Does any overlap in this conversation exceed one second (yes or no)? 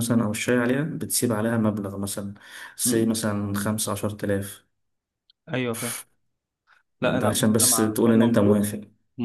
yes